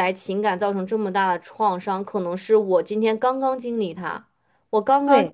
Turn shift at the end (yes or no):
no